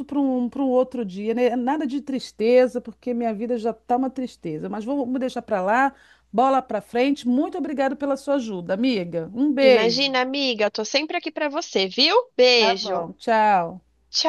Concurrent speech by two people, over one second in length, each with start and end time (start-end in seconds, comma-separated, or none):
none